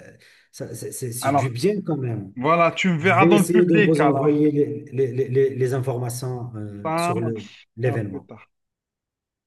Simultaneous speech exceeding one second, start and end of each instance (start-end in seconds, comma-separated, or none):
3.0-4.4, 6.8-8.3